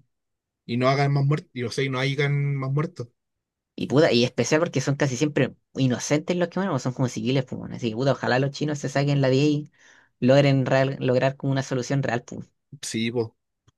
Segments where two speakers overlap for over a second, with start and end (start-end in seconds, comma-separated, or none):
none